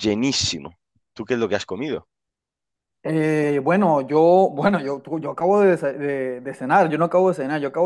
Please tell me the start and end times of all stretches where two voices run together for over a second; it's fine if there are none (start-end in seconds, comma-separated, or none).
none